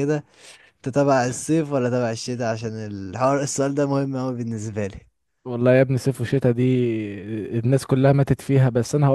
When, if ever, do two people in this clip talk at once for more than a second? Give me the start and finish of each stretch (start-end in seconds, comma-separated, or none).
none